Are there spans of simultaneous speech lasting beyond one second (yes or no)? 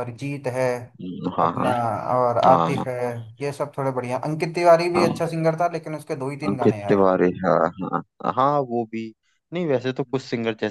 no